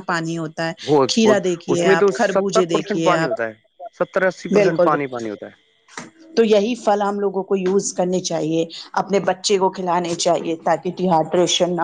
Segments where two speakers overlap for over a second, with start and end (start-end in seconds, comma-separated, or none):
1.1-3.4